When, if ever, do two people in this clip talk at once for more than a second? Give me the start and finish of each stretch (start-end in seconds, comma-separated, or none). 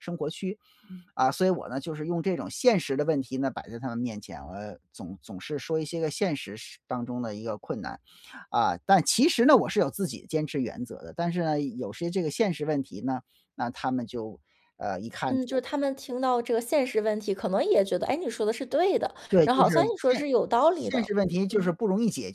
19.3-21.7